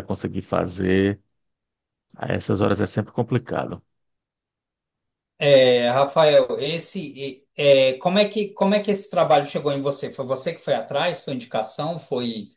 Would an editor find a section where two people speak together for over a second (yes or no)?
no